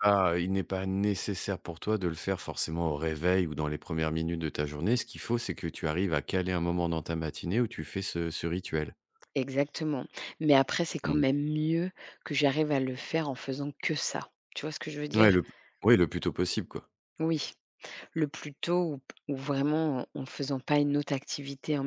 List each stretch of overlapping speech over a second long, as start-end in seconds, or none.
none